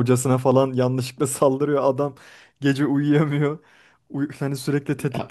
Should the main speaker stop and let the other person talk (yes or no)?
no